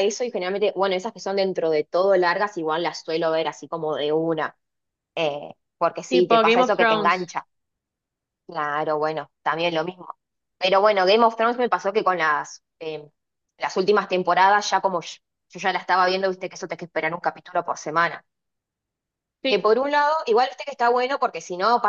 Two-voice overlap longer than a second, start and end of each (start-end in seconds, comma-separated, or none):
6.1-7.3